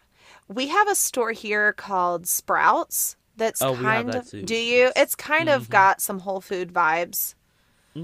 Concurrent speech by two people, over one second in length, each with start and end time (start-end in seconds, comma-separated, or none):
3.6-5.9